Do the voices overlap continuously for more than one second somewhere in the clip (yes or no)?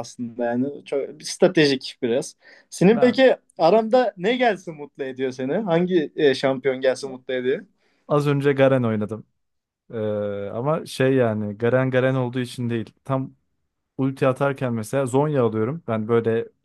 no